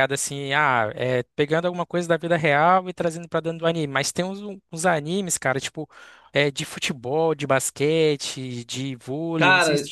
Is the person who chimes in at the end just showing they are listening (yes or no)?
no